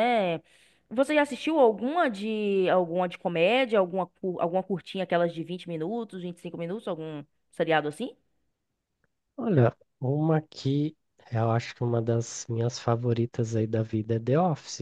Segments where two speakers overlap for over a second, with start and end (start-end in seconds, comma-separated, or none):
none